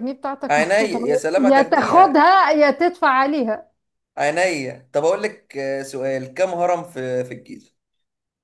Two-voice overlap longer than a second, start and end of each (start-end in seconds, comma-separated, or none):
0.5-2.3